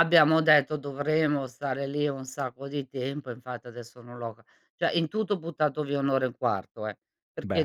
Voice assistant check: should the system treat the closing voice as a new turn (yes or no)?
no